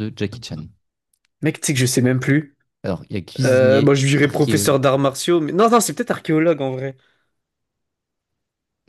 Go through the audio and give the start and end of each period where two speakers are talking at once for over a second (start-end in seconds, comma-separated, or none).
3.5-4.7